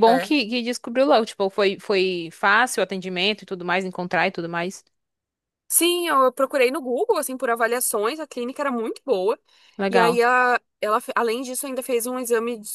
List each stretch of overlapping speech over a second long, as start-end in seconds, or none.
none